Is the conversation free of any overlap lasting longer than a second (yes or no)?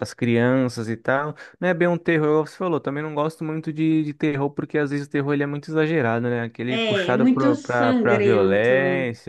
no